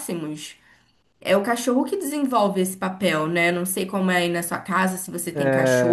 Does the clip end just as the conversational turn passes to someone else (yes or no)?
yes